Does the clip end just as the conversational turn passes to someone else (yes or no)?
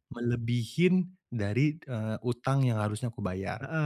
yes